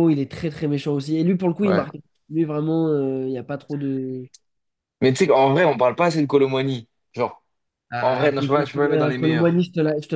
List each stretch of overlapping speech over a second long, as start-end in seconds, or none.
8.0-9.6